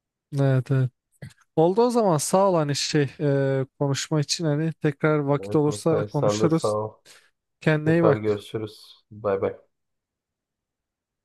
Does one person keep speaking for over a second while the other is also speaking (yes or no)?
yes